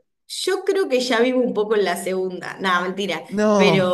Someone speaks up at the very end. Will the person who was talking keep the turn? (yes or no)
yes